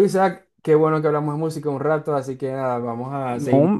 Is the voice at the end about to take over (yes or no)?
no